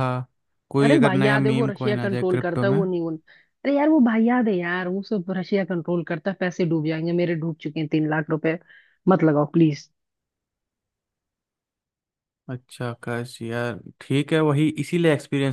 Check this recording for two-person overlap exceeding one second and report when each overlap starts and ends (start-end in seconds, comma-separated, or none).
0.8-2.8